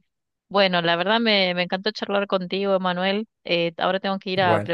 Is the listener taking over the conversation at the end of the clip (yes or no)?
no